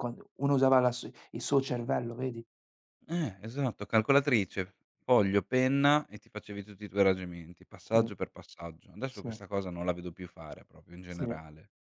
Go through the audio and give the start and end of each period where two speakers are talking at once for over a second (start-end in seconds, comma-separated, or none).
none